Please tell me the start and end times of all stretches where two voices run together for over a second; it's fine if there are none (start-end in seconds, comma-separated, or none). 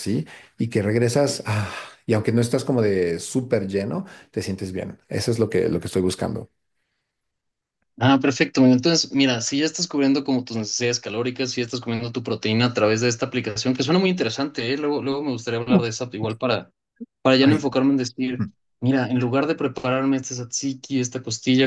none